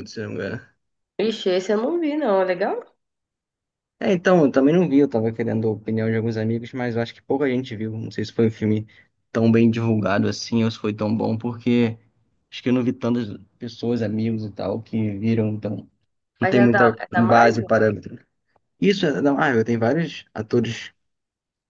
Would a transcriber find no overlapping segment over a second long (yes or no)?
no